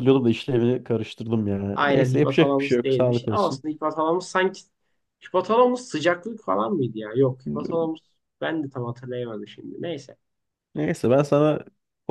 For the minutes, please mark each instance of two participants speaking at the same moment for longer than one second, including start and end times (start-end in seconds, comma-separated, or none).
1.7-3.6